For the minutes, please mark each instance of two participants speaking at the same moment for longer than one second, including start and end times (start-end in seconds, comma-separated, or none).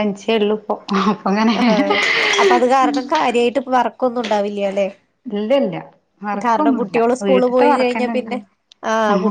6.5-8.4